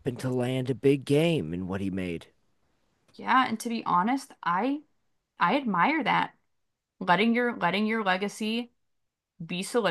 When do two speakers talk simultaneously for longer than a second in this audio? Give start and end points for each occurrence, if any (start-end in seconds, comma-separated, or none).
none